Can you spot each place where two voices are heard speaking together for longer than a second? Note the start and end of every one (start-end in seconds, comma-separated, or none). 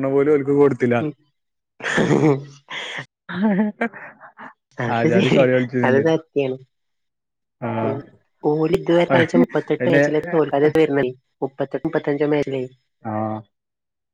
none